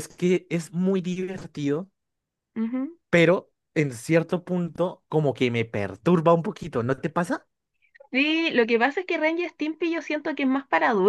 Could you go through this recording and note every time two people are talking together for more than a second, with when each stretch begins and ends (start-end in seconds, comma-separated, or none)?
none